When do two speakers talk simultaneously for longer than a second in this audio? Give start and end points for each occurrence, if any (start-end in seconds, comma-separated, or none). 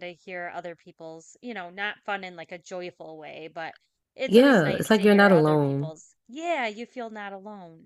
4.3-5.9